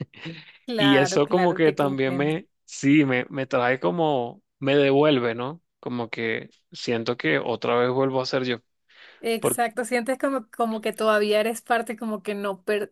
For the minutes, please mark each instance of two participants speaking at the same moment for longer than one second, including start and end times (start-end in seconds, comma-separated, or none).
0.8-2.4